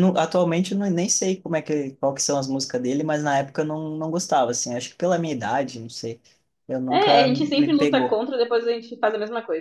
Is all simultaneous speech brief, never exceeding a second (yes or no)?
no